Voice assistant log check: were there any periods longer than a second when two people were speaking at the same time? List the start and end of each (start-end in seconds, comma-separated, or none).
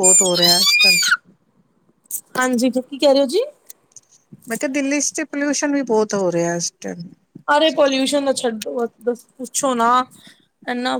none